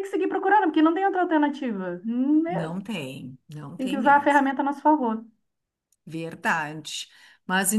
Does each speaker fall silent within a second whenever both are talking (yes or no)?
yes